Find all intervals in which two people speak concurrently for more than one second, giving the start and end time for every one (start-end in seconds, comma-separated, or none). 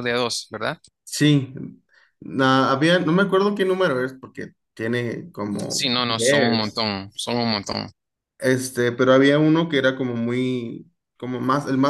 5.7-6.9